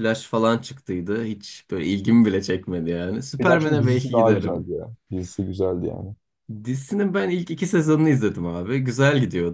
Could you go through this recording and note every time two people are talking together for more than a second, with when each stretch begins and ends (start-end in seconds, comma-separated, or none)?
3.4-4.7